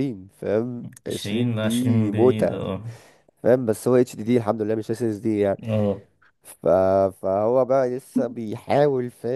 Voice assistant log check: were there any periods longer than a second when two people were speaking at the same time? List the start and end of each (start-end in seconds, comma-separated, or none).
1.1-2.6